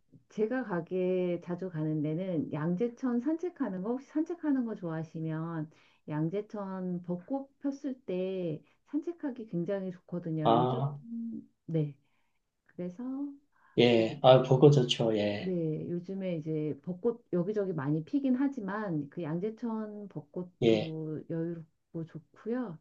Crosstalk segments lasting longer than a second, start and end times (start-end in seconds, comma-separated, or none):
none